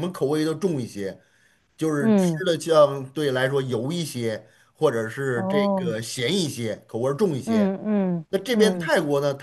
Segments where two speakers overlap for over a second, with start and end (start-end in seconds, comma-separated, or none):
none